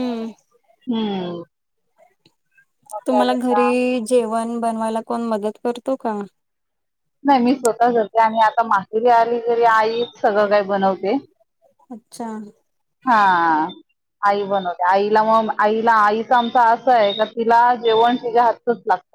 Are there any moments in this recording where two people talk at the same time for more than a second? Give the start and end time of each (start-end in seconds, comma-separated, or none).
none